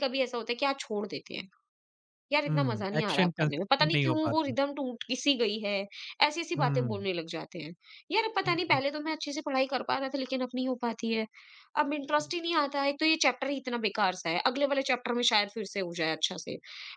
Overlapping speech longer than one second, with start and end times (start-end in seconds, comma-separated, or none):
2.5-4.5